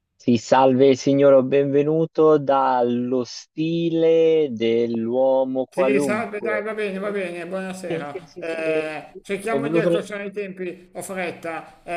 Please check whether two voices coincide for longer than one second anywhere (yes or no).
yes